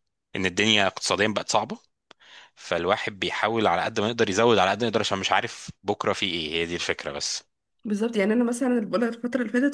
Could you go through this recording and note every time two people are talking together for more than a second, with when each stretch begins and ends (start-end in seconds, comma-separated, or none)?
none